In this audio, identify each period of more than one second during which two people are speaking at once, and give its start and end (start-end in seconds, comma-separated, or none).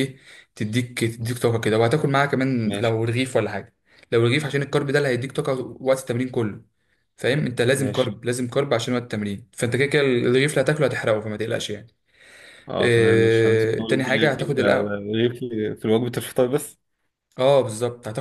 12.8-15.1